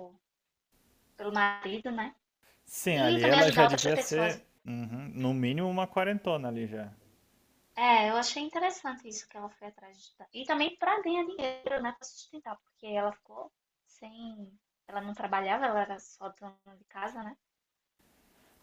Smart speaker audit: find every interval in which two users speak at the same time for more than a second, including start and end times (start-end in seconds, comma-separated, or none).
2.9-4.4